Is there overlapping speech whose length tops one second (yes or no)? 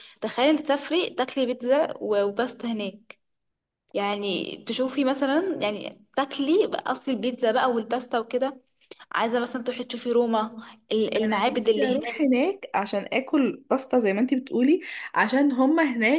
yes